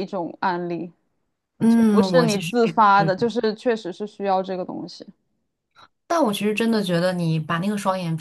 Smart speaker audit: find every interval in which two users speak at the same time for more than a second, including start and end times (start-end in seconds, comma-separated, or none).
1.7-3.1